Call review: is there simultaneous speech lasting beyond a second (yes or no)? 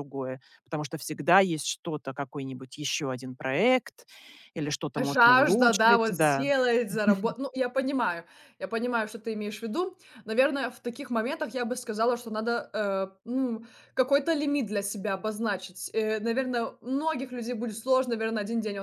yes